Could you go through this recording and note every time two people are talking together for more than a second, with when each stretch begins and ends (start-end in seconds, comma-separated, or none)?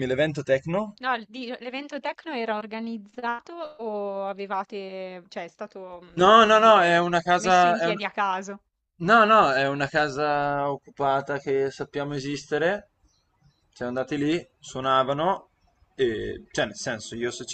6.1-8.0